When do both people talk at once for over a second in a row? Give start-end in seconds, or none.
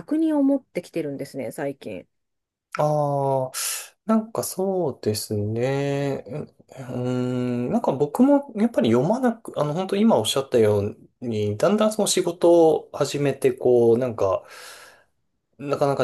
none